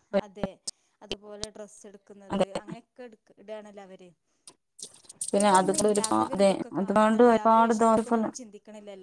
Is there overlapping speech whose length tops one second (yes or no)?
yes